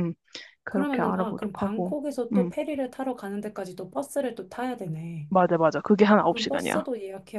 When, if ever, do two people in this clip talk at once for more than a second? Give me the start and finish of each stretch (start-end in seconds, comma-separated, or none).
0.7-2.5